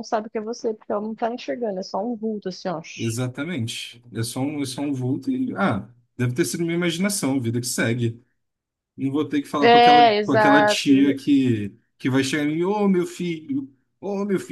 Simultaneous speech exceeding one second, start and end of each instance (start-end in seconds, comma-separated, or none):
9.6-11.0